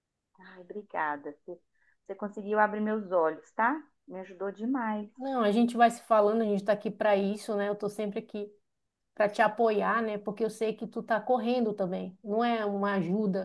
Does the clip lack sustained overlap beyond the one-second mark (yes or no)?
yes